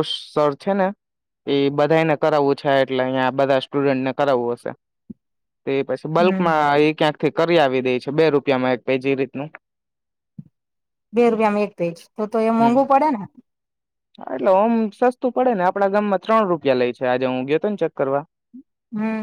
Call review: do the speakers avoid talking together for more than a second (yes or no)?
yes